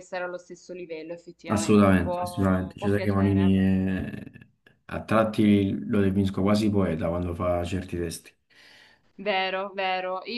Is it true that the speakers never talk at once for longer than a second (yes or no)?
no